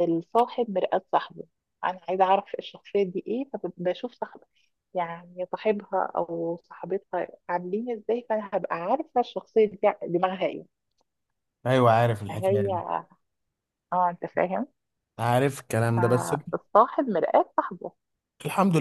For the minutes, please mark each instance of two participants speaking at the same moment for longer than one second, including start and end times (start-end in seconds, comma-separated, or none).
none